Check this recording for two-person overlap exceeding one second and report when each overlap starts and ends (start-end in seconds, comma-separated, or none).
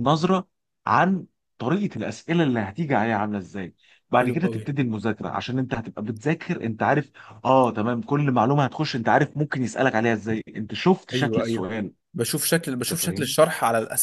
none